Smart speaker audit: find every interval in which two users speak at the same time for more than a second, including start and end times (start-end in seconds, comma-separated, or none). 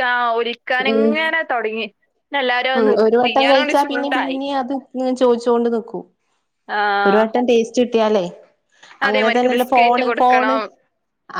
9.1-10.6